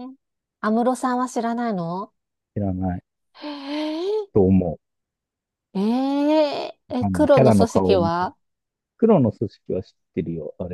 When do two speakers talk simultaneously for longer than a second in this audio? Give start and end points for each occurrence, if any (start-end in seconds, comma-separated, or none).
7.0-8.3